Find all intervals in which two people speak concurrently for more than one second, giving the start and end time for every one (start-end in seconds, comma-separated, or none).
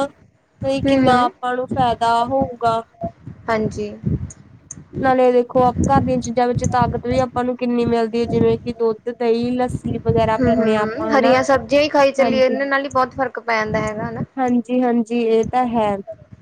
10.0-11.4